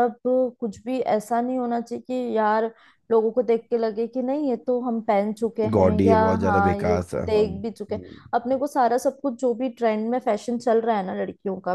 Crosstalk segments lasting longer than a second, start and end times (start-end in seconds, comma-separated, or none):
5.7-8.2